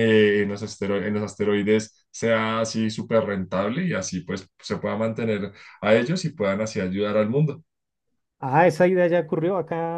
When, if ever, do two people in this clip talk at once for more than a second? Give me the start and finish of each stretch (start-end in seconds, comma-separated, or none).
none